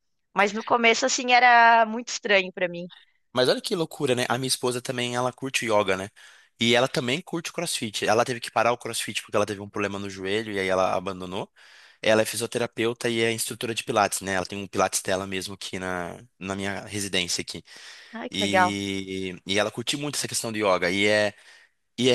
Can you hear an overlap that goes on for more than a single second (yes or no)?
no